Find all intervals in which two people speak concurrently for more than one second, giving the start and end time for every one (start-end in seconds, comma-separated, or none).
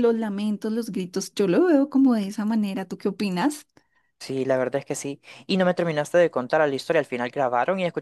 none